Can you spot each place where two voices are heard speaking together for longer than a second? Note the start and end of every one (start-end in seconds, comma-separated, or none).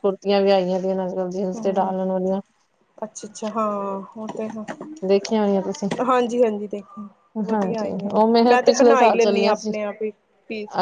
7.5-9.7